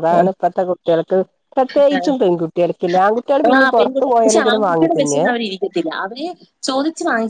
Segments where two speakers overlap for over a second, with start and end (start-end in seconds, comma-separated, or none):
3.6-5.2